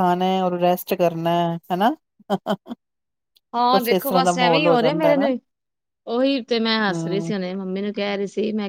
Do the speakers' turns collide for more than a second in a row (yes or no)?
yes